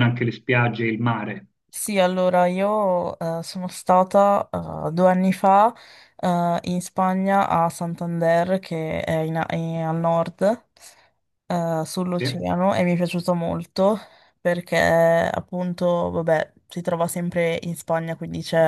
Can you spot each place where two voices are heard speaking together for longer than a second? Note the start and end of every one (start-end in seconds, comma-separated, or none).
none